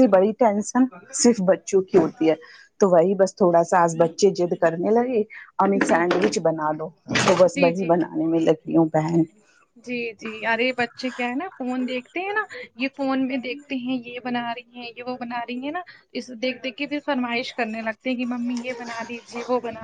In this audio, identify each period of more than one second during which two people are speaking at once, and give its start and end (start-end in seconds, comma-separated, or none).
none